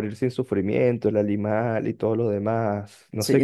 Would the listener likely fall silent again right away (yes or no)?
no